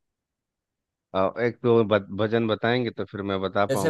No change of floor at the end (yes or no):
no